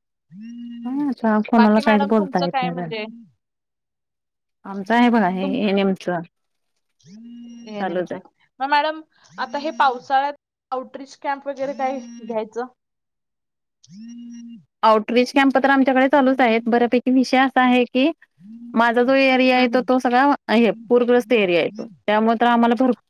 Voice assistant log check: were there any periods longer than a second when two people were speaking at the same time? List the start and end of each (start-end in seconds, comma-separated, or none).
1.6-2.9